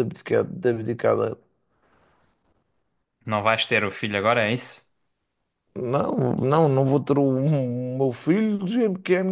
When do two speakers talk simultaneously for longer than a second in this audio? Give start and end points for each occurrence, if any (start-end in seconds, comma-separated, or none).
none